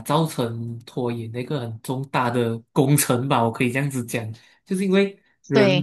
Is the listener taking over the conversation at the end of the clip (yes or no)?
no